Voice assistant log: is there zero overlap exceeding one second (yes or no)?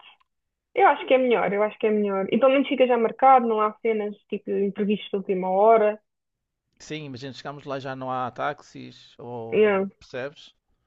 yes